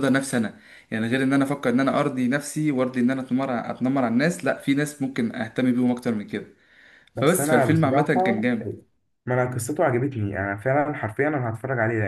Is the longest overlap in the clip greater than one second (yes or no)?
yes